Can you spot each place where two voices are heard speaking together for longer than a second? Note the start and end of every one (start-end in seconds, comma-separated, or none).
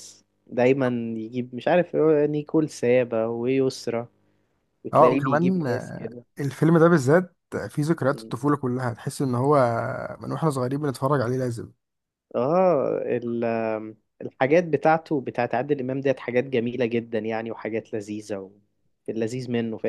4.9-6.2